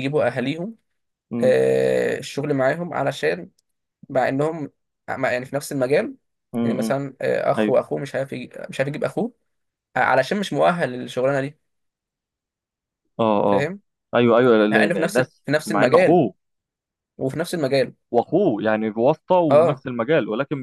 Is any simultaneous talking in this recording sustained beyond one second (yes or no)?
yes